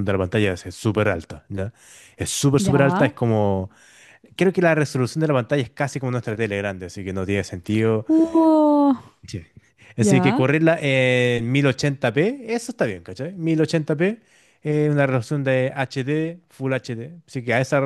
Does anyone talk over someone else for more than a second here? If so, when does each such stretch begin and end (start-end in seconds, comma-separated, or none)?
none